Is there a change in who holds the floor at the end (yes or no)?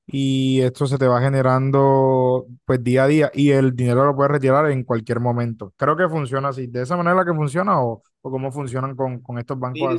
yes